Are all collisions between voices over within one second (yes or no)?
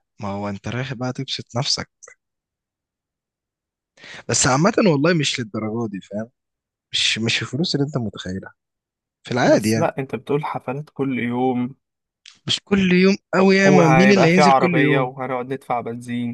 no